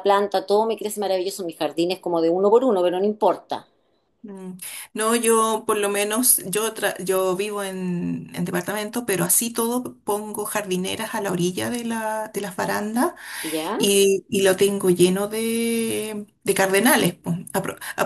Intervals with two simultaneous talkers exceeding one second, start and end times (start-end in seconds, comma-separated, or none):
none